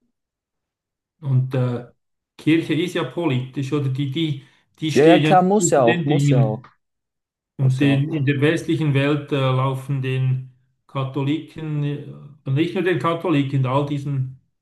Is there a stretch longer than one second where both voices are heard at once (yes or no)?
yes